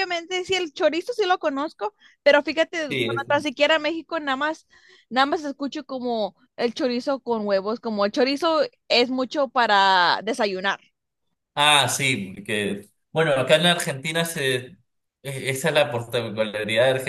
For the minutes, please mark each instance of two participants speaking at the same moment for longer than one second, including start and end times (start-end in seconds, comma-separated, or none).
none